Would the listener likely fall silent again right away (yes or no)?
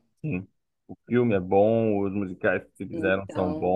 yes